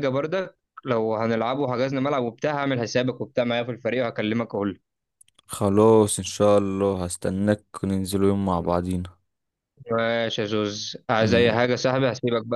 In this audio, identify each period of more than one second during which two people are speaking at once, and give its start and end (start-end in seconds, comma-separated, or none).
none